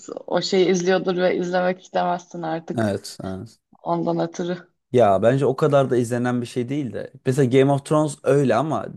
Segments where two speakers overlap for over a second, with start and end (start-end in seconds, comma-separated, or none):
none